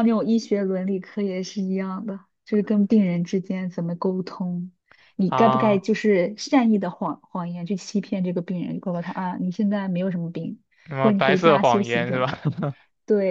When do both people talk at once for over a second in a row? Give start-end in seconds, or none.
11.0-12.3